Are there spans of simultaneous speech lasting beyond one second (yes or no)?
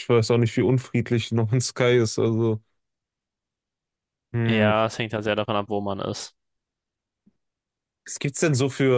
no